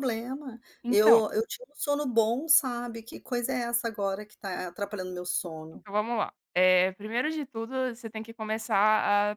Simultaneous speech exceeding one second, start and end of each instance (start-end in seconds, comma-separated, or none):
none